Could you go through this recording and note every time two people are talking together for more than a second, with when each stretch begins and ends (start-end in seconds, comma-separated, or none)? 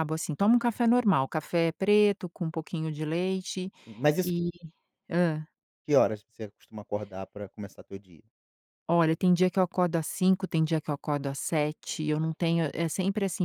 none